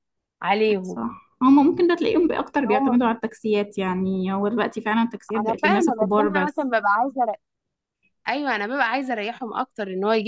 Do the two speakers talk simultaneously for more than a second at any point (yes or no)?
yes